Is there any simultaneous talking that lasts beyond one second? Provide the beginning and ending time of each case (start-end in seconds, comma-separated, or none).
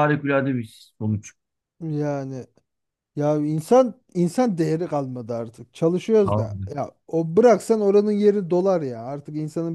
none